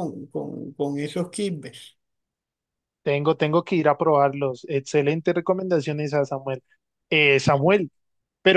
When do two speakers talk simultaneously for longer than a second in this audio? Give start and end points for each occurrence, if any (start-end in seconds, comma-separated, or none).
none